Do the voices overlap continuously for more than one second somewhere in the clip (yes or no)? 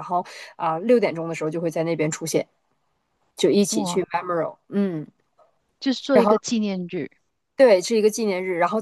no